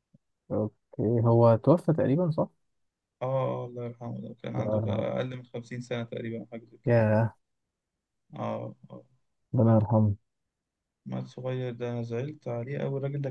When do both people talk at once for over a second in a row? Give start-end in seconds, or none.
none